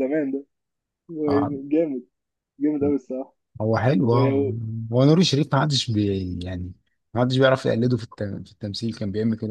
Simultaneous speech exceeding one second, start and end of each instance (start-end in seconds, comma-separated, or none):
none